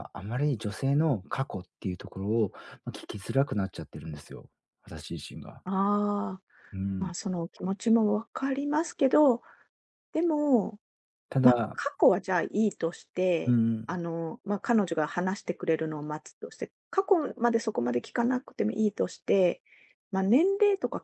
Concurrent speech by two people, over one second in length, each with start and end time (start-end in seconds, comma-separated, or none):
none